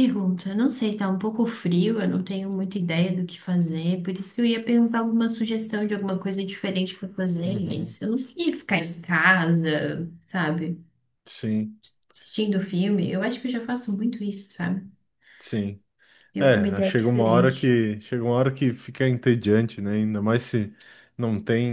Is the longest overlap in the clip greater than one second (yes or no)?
yes